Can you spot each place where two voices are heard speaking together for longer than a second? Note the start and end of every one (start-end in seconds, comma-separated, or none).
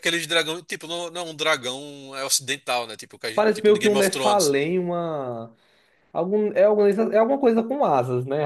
3.3-4.6